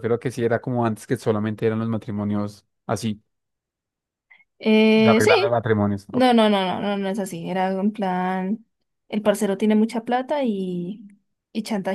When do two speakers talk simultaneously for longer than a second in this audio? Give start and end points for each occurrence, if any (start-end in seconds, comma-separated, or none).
none